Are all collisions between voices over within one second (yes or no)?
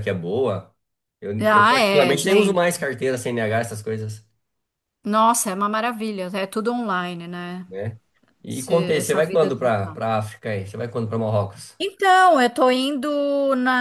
no